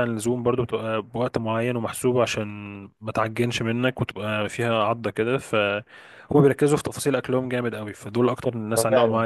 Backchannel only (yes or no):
no